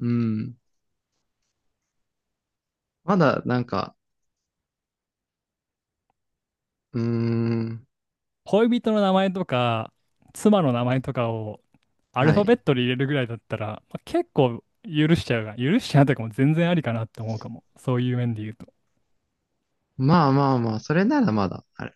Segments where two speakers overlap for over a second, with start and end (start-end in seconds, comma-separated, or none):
none